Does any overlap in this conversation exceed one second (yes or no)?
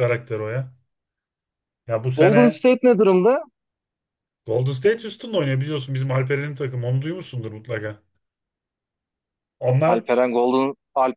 no